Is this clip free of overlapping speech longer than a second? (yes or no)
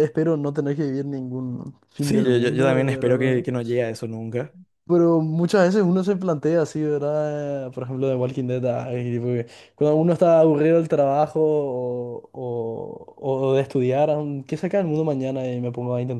no